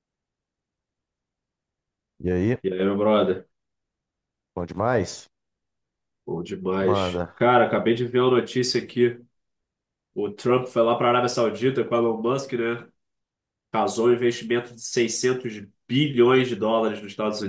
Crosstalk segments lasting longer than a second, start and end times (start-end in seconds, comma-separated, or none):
none